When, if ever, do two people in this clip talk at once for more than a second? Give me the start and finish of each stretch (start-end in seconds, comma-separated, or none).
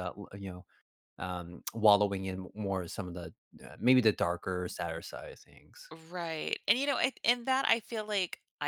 none